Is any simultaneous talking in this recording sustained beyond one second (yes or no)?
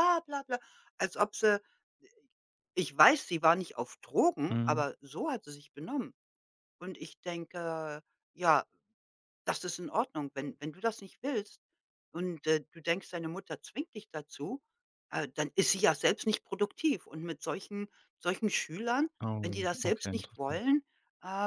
yes